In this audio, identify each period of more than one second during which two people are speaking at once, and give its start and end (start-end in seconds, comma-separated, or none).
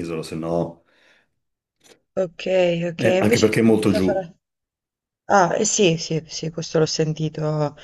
3.0-4.2